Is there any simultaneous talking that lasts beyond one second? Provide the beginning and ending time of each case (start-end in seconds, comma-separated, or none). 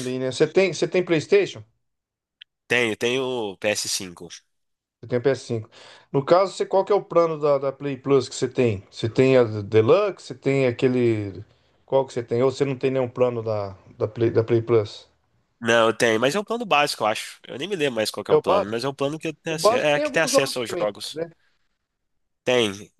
19.5-20.9